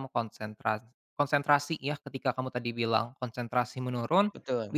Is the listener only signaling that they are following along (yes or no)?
yes